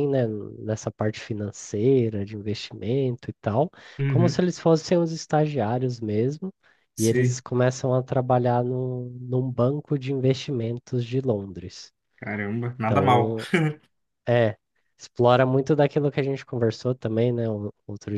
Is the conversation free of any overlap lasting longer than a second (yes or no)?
yes